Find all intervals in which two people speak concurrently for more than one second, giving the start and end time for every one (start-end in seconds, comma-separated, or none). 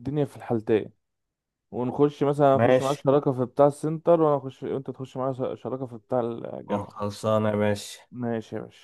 none